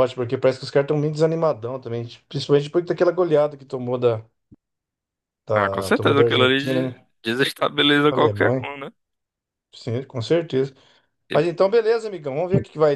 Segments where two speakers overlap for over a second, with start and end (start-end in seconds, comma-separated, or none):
5.5-7.0